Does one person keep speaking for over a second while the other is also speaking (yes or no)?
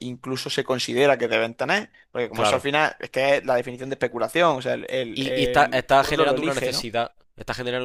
yes